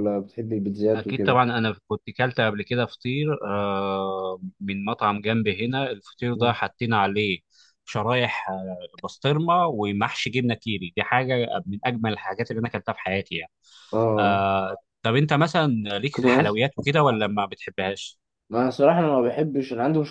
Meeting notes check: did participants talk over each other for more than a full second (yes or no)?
no